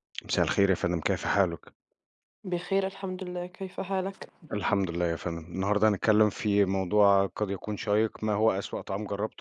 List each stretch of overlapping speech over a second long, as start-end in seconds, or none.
none